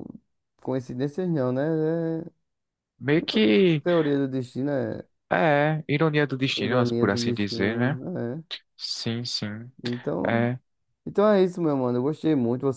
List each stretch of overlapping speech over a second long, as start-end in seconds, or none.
6.5-8.0